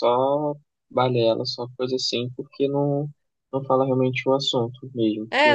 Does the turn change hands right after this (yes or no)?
yes